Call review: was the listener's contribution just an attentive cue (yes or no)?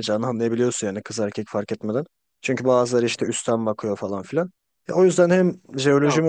yes